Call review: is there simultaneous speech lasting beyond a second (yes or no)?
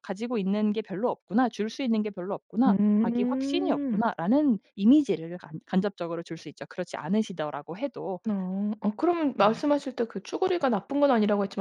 yes